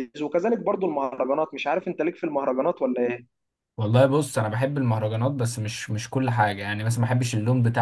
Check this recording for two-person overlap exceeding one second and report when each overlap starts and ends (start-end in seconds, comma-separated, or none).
none